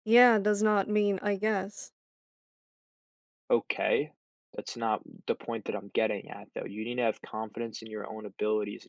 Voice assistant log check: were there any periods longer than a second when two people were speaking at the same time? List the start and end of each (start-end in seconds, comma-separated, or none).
none